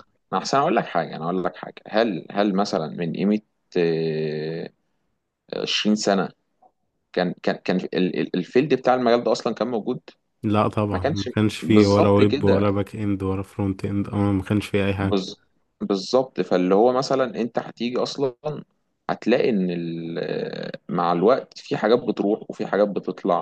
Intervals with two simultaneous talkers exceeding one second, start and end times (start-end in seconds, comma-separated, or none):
10.9-12.7